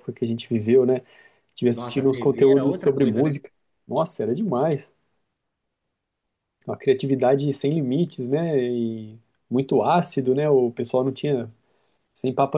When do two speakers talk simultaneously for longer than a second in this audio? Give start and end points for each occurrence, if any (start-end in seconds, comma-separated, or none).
1.7-3.4